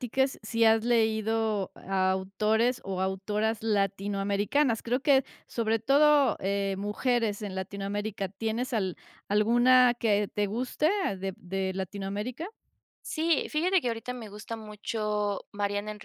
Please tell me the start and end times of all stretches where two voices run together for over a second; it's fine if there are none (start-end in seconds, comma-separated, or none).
none